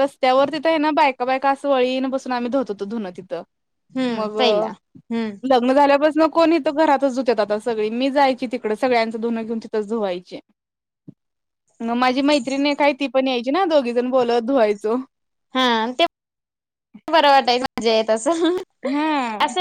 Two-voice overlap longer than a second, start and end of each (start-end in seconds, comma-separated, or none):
none